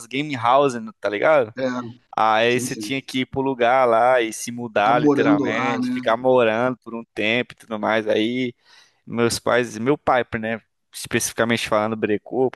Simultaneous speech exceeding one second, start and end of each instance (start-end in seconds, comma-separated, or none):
4.7-6.0